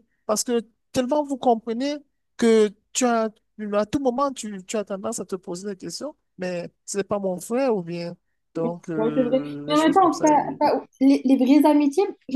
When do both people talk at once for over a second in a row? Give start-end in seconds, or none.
9.0-10.6